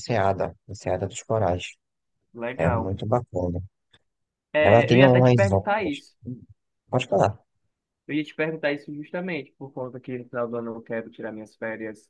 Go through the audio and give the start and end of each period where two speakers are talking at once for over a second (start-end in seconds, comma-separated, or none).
4.6-6.2